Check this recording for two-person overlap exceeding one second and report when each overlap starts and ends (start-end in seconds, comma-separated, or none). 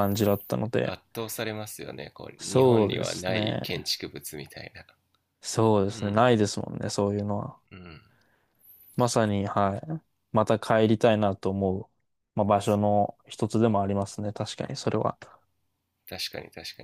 2.4-3.6